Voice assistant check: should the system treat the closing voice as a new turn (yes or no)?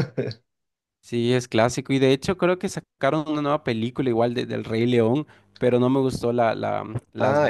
yes